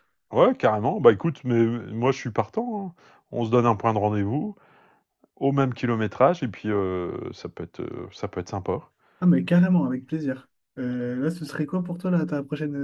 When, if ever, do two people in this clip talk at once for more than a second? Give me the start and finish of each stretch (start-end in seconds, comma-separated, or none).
none